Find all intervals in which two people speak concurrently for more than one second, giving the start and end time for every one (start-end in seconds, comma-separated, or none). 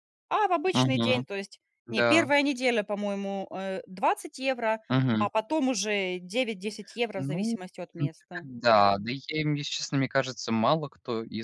7.2-8.5